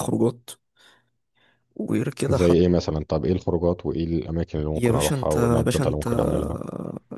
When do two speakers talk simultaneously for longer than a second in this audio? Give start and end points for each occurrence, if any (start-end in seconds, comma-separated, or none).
4.8-6.1